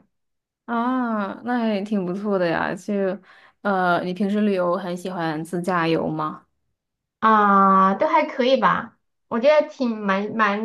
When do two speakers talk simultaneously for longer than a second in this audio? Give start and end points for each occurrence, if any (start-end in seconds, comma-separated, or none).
none